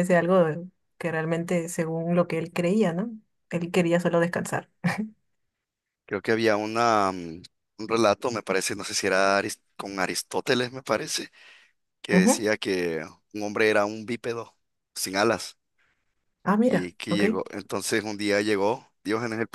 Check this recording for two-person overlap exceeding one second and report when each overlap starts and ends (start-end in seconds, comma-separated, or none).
none